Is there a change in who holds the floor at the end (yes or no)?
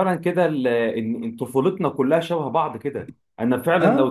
no